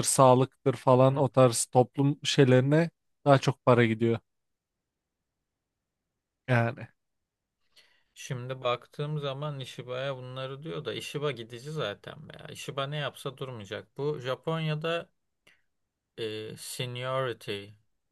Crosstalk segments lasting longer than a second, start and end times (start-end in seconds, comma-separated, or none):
none